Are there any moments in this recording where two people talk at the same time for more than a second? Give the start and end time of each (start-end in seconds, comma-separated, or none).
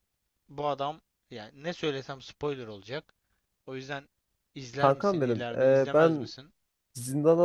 4.8-6.3